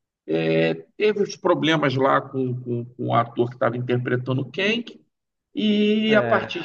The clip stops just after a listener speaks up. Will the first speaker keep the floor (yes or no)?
yes